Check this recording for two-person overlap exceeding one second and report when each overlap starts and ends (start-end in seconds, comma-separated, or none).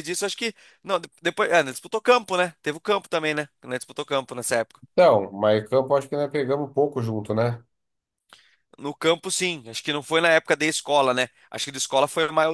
none